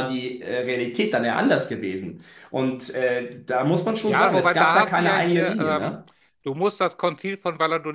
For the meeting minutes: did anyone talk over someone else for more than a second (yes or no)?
yes